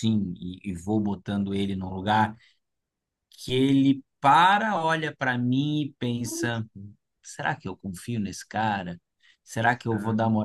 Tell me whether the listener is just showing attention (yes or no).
yes